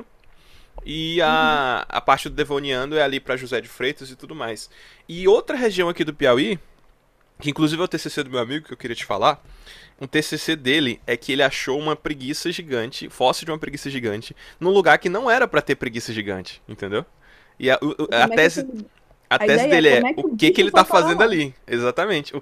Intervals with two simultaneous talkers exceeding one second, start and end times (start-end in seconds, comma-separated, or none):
19.4-21.3